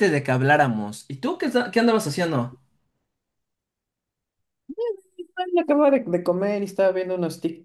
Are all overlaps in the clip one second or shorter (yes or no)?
yes